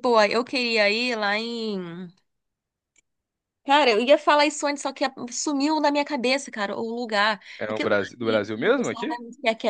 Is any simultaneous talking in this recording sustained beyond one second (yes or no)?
yes